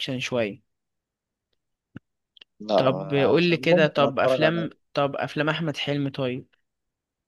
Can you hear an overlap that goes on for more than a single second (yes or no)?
yes